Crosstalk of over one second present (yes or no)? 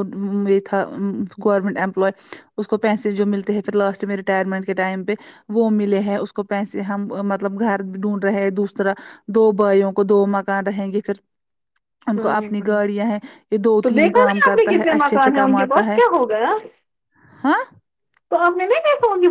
yes